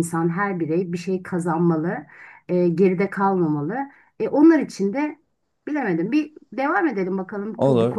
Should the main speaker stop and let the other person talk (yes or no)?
yes